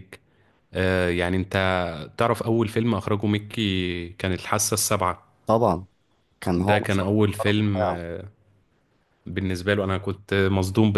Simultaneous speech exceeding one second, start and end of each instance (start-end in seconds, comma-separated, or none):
6.6-8.0